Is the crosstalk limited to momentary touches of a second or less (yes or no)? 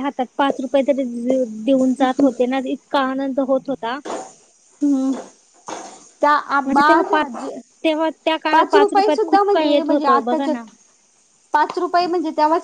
no